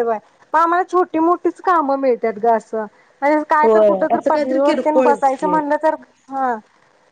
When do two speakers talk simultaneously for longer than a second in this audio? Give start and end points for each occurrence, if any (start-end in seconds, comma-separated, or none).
3.6-5.5